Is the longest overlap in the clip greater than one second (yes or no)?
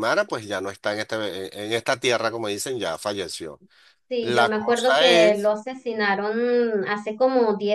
yes